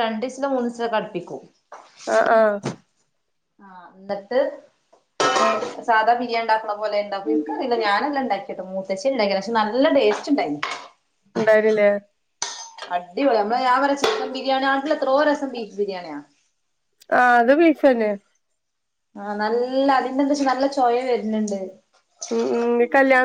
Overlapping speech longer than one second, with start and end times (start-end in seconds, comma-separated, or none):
none